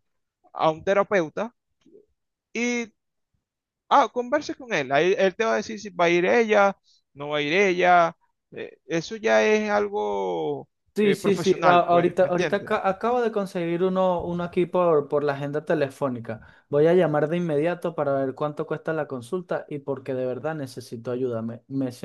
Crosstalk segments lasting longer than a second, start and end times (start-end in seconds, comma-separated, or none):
10.9-12.8